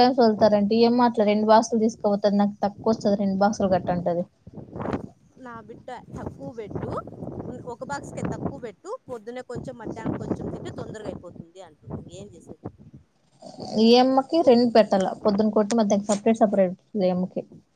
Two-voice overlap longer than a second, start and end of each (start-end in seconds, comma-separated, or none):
none